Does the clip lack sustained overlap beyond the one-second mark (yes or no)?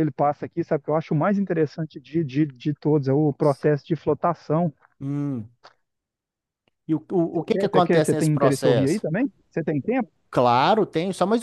no